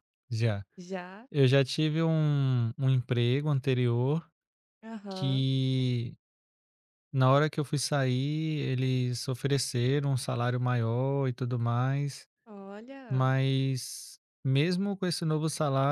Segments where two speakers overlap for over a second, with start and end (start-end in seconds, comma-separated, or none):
none